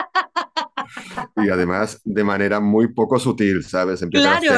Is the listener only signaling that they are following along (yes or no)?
no